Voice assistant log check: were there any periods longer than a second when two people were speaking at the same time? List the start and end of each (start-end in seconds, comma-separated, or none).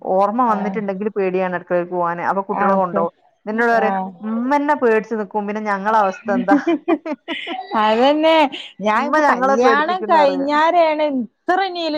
9.0-10.5